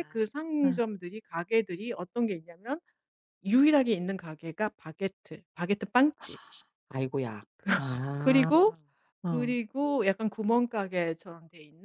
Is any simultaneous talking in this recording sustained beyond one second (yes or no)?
no